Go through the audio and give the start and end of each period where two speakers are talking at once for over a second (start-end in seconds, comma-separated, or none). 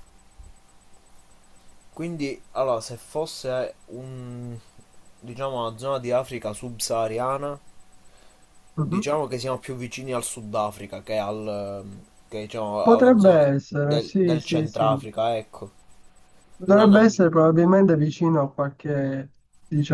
12.8-14.9